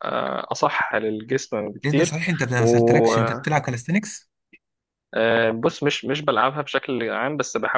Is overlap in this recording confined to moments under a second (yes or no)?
yes